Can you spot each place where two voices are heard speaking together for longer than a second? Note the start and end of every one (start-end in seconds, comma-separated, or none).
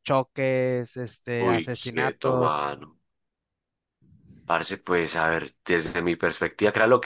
1.4-2.7